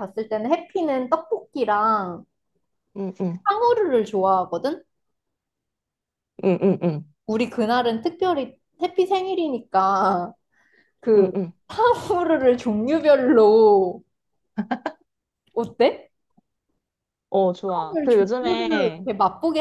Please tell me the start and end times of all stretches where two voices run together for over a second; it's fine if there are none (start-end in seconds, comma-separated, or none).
17.7-19.1